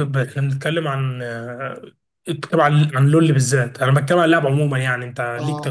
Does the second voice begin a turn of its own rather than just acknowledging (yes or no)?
yes